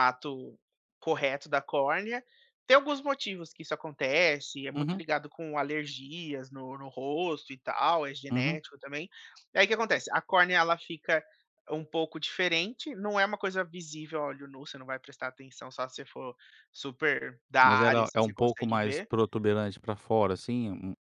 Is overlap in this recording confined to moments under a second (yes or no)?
no